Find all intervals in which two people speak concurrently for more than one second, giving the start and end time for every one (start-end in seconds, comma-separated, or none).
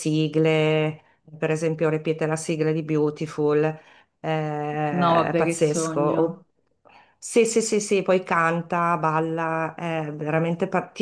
4.9-6.4